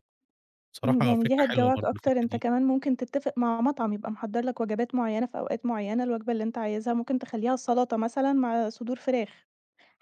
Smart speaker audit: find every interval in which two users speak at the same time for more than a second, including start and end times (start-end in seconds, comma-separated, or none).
0.8-2.4